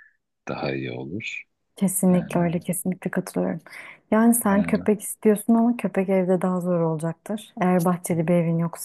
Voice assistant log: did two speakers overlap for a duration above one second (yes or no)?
no